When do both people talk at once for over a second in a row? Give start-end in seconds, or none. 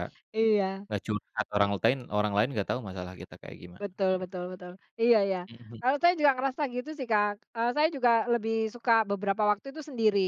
none